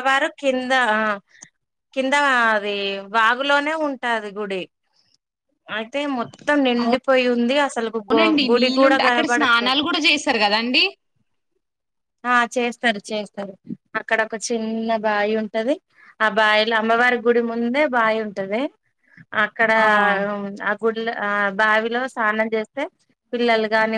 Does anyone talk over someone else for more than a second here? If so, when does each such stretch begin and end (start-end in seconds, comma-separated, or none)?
8.0-9.8